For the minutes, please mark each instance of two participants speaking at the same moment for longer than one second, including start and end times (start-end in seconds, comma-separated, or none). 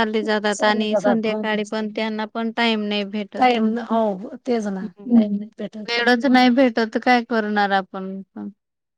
0.6-1.9